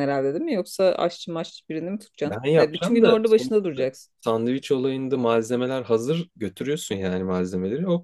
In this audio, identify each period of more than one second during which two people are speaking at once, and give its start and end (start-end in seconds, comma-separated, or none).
2.2-4.1